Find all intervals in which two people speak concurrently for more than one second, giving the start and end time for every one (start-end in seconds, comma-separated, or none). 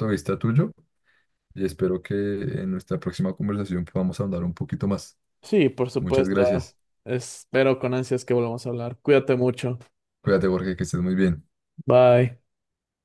none